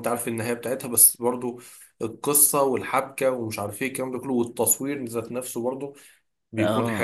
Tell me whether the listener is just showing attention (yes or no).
no